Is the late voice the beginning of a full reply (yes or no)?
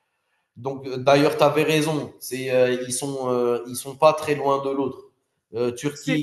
no